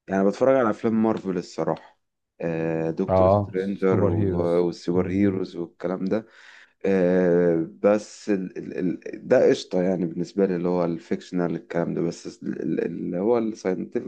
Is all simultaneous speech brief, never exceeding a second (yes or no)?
no